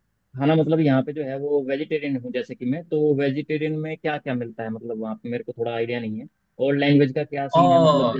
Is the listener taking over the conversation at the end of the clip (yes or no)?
no